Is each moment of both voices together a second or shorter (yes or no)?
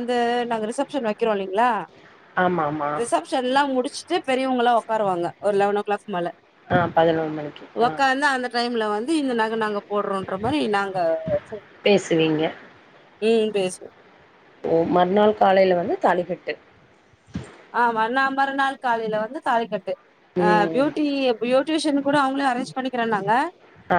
yes